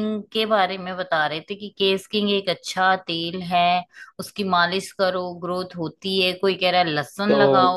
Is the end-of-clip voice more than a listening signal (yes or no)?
yes